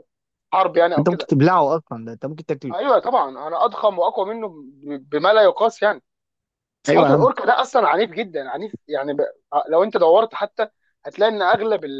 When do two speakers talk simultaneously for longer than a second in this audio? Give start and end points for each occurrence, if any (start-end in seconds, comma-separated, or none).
none